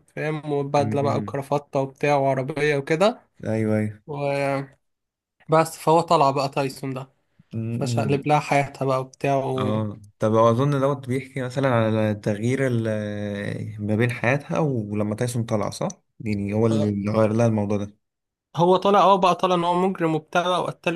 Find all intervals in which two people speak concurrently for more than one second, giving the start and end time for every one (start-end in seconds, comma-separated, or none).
none